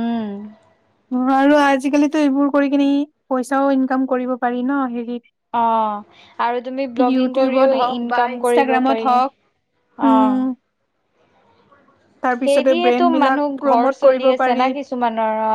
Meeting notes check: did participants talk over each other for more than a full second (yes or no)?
yes